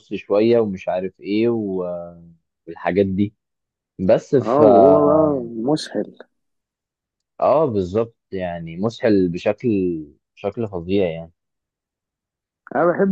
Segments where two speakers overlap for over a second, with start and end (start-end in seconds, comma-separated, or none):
none